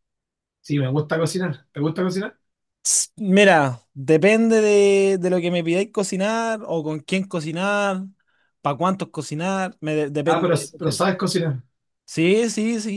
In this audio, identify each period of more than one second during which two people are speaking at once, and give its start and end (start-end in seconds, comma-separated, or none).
none